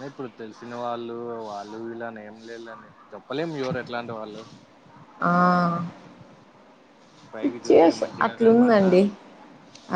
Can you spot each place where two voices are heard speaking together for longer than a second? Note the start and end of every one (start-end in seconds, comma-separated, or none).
7.4-8.9